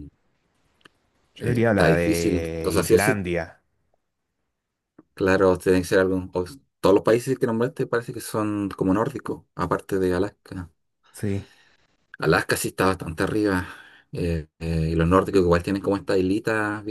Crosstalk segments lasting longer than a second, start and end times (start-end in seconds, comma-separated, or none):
1.4-3.2